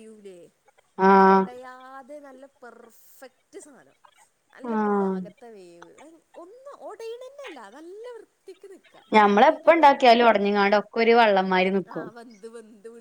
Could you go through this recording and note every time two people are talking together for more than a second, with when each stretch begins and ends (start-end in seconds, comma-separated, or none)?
none